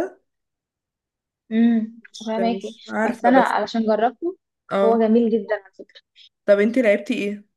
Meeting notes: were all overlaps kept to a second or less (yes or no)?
no